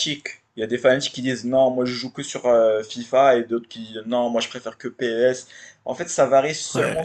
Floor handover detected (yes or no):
no